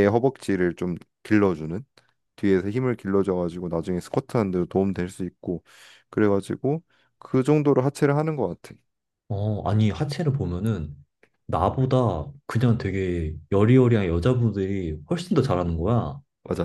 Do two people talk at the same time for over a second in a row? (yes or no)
no